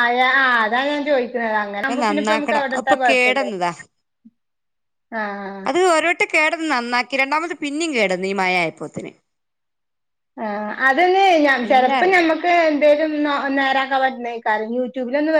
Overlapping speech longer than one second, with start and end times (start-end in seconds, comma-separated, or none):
1.9-3.5